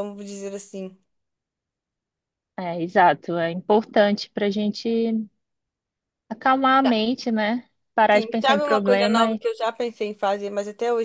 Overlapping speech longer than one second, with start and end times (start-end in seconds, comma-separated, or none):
8.1-9.4